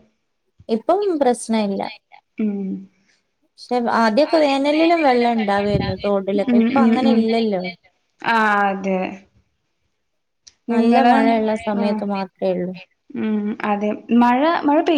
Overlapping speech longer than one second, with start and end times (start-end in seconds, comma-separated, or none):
5.4-6.8